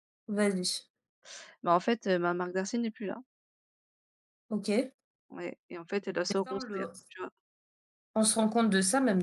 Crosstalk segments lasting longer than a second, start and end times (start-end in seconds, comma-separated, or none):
none